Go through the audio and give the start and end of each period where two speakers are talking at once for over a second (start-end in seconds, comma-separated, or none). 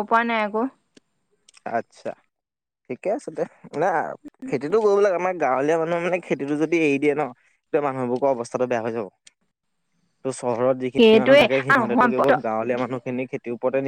10.9-12.3